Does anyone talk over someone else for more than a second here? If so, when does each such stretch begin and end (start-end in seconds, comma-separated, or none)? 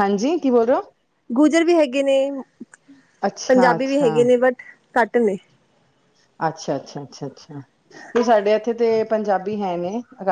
none